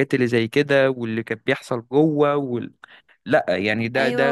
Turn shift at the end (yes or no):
yes